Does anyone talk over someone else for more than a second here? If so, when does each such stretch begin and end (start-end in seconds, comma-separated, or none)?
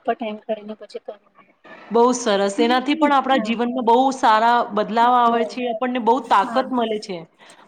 none